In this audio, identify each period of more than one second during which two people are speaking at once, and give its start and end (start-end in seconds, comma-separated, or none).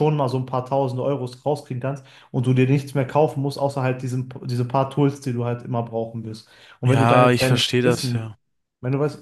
6.8-8.3